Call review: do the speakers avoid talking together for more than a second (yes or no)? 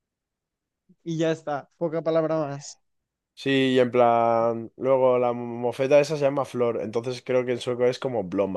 yes